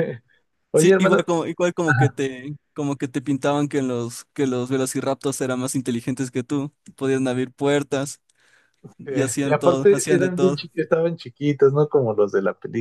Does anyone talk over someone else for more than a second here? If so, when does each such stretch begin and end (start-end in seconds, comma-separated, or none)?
9.1-10.7